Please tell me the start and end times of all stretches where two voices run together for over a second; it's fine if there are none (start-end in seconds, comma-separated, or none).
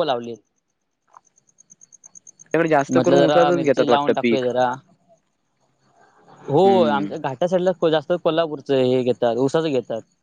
2.9-4.4